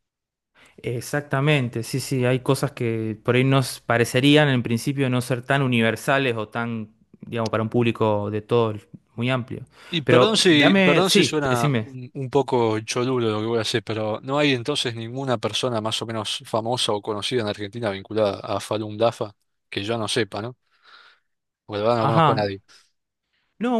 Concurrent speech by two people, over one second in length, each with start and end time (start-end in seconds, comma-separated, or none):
10.1-11.9